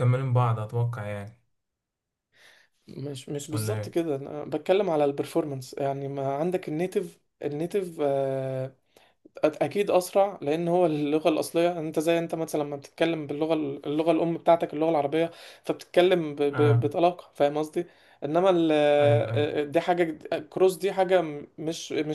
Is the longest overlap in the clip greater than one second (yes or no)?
no